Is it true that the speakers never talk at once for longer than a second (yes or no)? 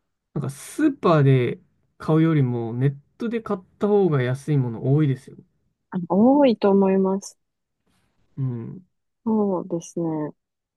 yes